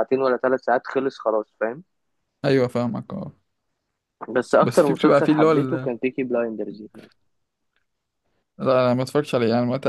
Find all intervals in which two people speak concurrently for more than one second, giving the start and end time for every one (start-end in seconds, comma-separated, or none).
4.6-5.9